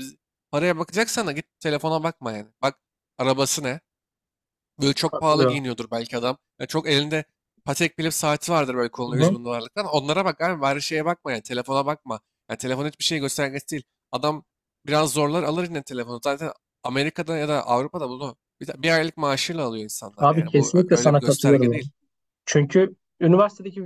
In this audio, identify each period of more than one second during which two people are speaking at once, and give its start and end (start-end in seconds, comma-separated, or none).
20.2-21.8